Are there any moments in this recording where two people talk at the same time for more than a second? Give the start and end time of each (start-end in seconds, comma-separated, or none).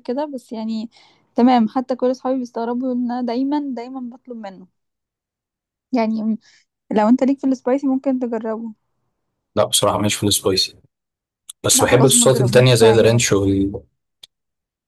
11.7-13.2